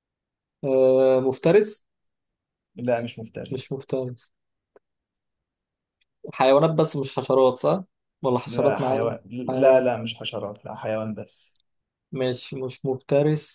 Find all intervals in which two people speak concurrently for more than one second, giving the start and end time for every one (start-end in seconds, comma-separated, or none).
8.4-9.9